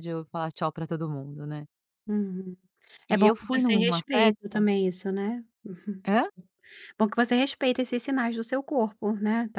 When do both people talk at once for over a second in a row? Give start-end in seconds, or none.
3.1-4.6